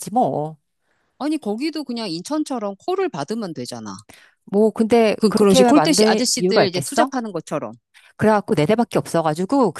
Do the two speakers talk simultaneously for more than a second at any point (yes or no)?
yes